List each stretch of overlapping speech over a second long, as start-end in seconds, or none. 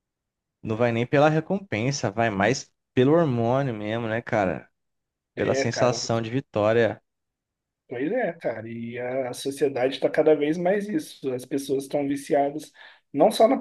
none